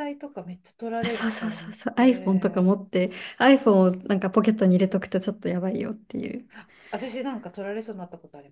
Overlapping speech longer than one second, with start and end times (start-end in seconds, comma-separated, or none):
1.0-2.7